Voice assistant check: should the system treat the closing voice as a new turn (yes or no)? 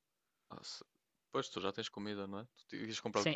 yes